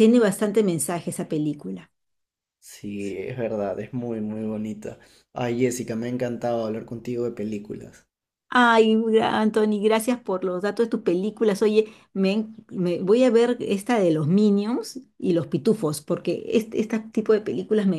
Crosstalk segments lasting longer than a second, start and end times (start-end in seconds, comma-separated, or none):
none